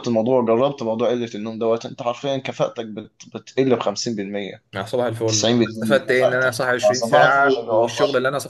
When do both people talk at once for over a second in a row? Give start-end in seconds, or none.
5.3-7.9